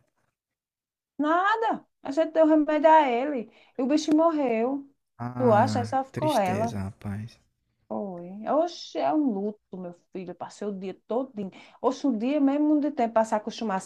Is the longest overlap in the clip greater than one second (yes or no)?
yes